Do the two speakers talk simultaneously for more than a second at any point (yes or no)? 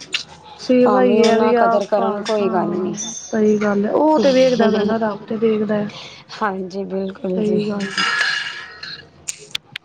yes